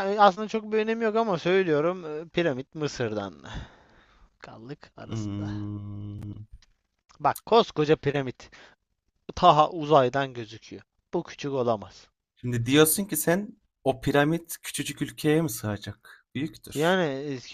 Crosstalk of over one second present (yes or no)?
no